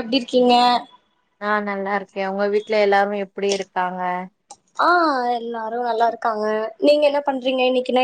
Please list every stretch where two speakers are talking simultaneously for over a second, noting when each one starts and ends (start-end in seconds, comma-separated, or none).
none